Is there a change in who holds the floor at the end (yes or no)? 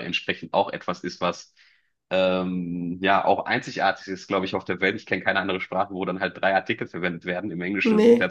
no